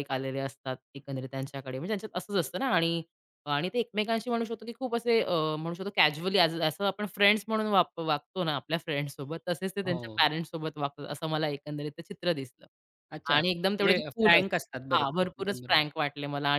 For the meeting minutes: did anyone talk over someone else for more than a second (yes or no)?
yes